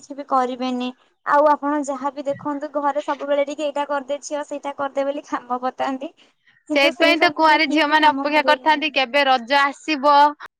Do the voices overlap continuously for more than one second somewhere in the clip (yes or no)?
yes